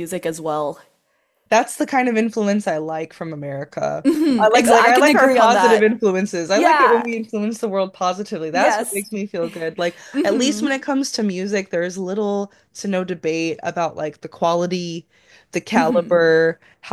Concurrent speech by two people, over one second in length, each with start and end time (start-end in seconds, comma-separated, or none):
4.0-5.9